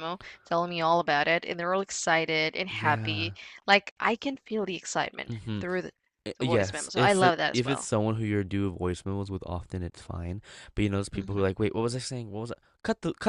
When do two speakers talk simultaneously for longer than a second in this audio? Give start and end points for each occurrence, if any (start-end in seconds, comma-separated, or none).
6.4-7.9